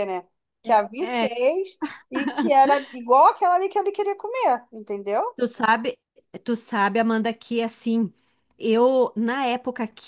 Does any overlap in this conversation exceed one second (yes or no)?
no